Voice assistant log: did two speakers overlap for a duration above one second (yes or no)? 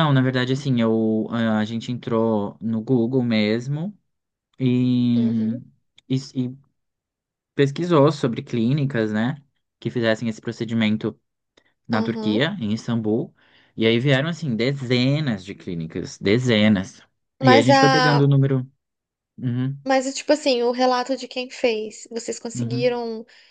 no